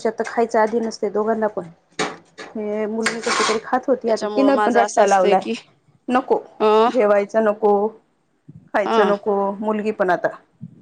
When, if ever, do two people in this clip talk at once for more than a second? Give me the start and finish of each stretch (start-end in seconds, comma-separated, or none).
4.0-5.4